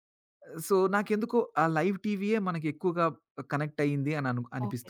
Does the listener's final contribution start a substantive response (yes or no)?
yes